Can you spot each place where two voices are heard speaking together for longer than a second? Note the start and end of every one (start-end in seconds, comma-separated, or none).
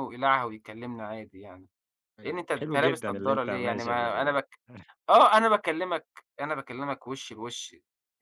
2.2-4.4